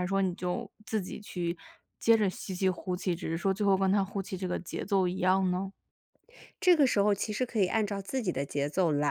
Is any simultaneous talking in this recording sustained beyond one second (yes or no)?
no